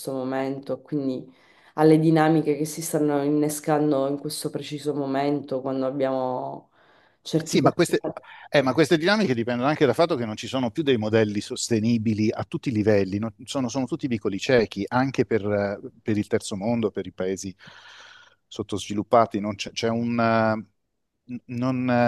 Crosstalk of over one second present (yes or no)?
no